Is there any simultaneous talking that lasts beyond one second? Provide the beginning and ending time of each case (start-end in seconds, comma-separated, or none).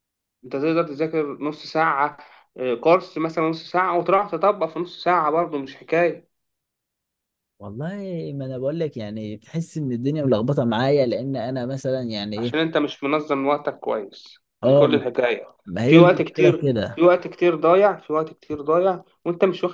15.7-17.1